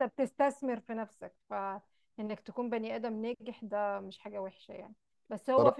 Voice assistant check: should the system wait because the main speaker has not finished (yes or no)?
yes